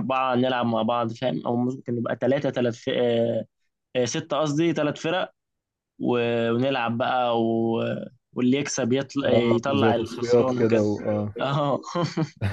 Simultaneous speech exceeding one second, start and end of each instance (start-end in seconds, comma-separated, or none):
9.2-10.8